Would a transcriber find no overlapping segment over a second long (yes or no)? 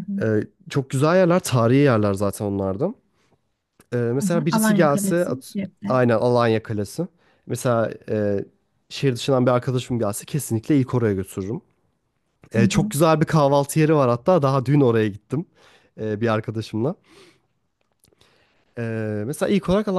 no